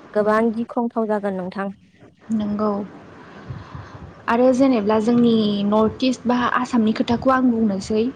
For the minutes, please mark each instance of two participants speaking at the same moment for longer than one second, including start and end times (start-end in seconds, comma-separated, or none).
none